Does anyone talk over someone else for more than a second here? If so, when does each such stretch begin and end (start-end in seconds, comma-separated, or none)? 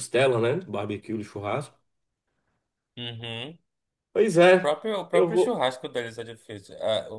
4.3-5.7